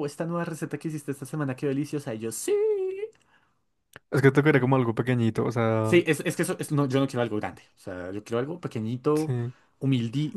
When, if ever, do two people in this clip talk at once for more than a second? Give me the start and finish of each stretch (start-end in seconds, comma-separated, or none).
none